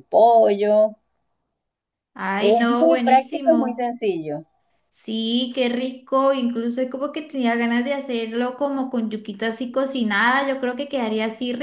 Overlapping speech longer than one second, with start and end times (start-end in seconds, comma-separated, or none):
2.4-4.0